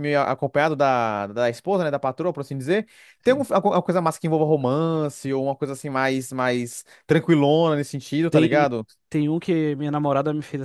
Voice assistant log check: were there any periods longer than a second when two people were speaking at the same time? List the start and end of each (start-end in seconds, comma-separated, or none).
none